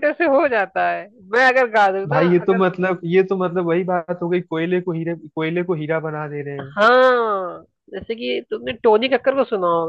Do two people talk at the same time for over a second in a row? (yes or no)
no